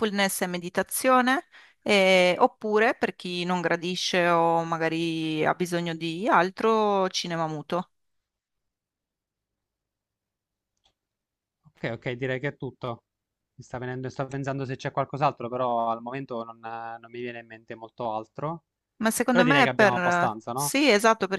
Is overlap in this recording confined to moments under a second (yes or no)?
no